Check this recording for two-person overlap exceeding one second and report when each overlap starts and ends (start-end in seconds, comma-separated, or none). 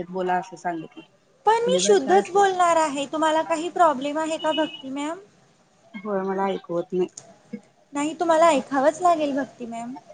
none